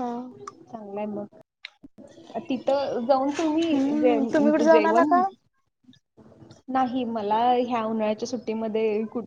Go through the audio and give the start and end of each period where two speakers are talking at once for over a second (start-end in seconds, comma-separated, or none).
3.7-5.1